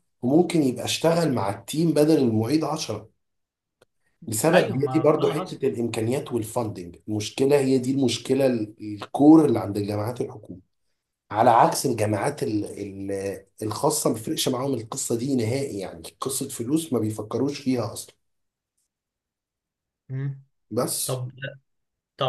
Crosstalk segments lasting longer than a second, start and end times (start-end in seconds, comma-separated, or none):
4.5-5.7